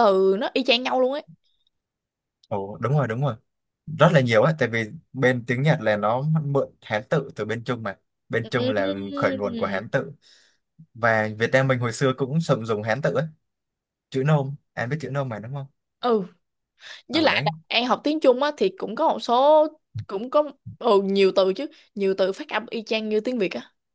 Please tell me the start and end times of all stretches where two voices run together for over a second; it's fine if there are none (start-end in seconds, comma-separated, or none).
8.4-9.9